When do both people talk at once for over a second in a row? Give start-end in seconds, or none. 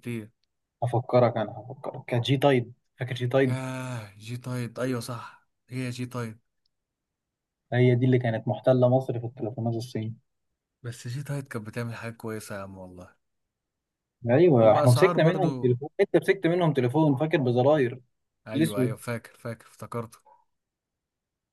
14.5-15.8